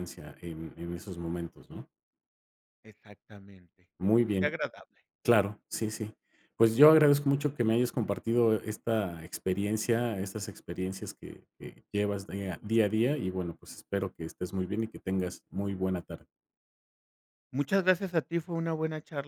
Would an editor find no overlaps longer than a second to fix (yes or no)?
yes